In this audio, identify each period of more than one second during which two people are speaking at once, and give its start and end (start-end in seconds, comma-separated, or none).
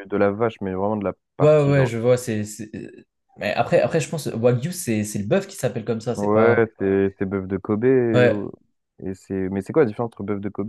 none